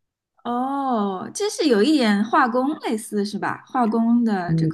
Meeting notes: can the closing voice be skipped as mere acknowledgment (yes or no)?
no